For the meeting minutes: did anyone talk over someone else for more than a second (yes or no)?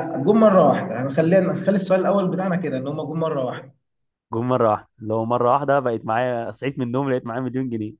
no